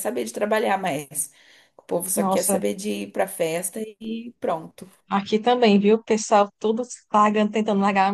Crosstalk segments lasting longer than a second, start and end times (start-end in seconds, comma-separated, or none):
none